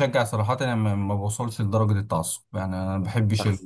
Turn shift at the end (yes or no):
no